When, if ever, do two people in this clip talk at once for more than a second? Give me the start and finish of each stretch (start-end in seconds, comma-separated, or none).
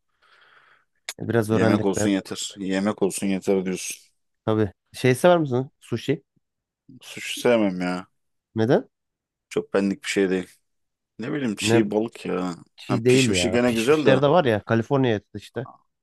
12.8-14.2